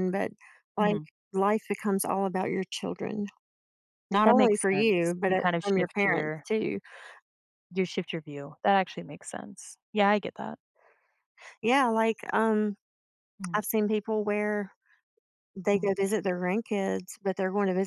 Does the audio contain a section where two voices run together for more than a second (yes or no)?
yes